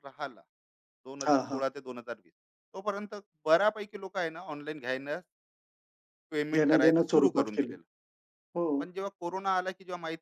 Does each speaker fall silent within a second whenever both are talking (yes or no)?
no